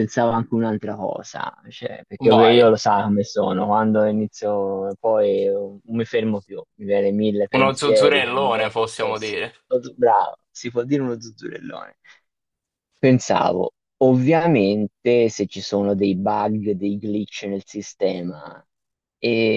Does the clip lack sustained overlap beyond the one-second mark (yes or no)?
no